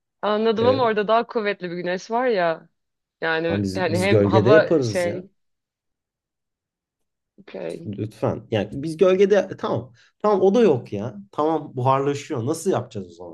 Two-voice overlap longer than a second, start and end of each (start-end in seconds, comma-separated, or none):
3.5-5.3